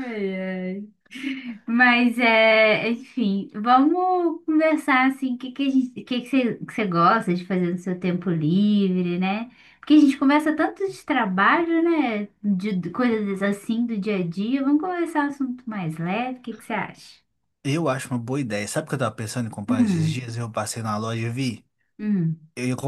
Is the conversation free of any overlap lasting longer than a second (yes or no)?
yes